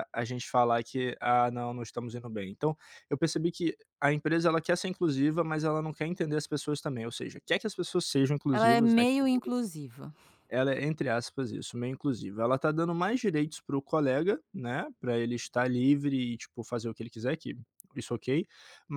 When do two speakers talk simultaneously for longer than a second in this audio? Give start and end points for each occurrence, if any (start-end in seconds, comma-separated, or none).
none